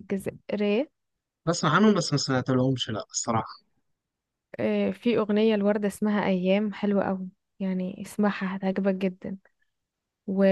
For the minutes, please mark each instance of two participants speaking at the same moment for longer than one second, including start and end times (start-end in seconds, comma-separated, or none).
none